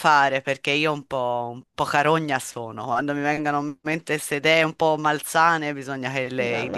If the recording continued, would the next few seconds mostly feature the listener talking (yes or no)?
yes